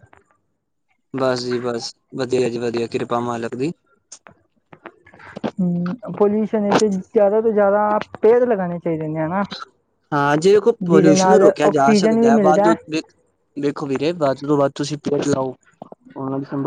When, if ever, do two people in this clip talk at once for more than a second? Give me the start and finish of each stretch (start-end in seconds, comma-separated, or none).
10.8-12.7